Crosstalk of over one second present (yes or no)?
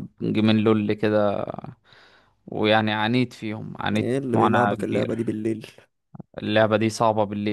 yes